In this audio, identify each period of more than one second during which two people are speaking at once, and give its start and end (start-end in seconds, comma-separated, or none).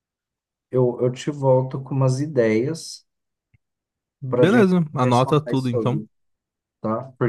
4.3-6.0